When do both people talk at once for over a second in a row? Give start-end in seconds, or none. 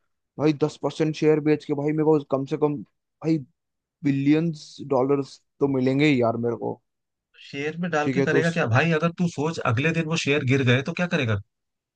none